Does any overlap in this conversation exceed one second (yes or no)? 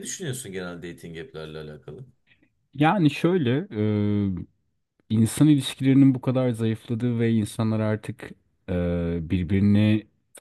no